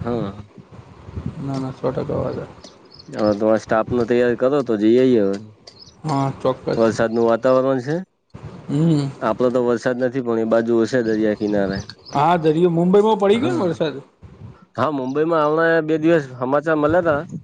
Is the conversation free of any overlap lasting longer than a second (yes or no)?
yes